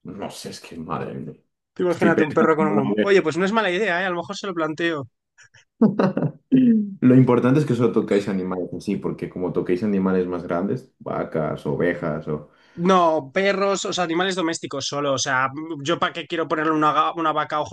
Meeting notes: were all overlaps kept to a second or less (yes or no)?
no